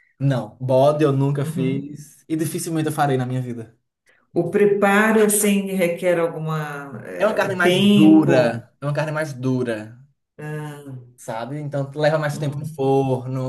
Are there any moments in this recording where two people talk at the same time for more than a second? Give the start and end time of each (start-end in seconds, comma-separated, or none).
7.2-8.6